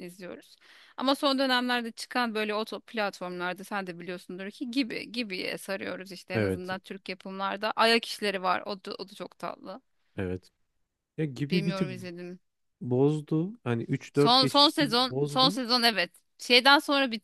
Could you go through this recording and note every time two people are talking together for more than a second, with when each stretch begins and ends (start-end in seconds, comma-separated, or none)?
14.1-15.6